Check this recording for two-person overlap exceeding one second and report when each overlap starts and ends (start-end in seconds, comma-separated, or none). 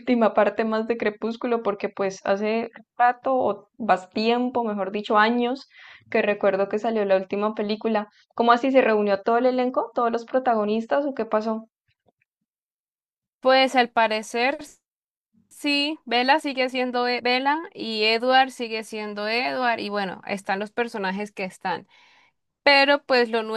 none